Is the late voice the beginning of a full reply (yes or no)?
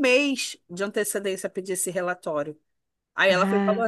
no